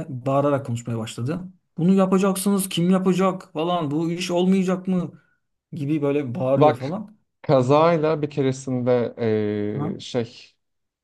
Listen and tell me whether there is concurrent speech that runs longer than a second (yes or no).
no